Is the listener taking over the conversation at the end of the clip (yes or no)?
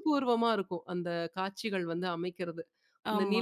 no